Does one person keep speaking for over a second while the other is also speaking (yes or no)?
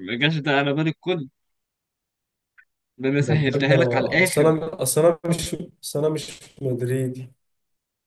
yes